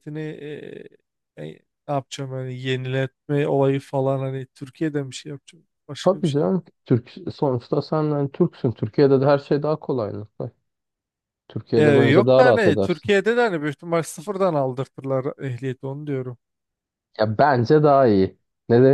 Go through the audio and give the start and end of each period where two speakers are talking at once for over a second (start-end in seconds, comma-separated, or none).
11.8-13.1